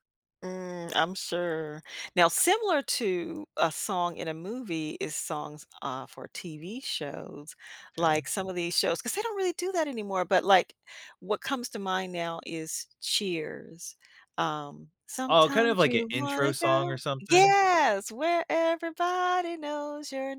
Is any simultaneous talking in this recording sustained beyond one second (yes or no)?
yes